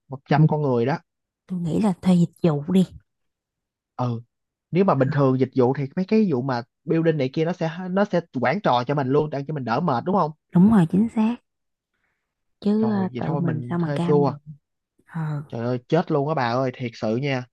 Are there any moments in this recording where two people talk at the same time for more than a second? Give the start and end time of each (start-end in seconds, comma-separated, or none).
12.8-14.3